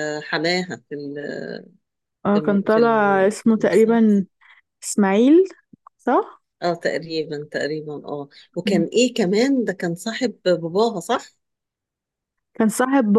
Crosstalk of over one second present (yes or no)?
yes